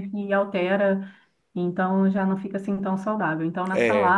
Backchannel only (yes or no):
yes